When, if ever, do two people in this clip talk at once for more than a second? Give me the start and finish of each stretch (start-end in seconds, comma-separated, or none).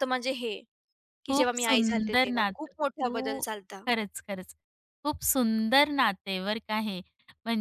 1.3-3.5